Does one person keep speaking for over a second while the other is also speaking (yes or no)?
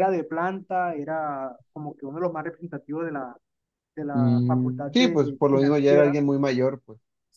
yes